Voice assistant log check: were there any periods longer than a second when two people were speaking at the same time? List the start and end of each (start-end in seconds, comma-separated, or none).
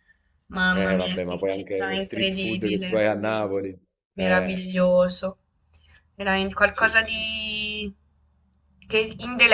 0.7-3.0